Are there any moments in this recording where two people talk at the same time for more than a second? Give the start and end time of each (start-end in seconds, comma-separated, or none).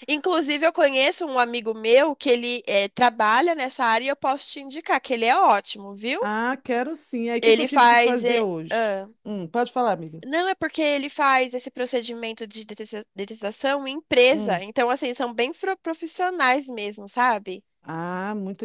7.4-9.1